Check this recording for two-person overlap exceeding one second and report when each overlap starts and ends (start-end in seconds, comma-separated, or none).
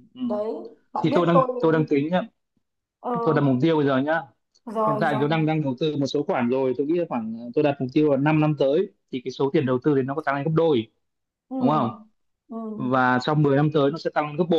none